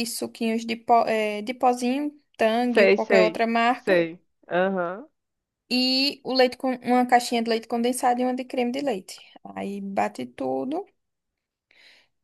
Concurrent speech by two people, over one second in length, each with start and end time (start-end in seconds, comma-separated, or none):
2.7-4.0